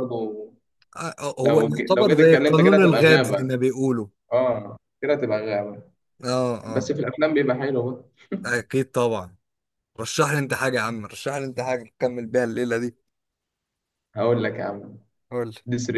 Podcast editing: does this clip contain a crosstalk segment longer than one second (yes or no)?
yes